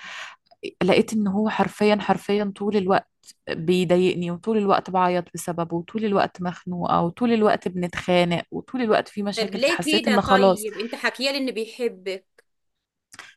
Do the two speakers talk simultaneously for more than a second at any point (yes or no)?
yes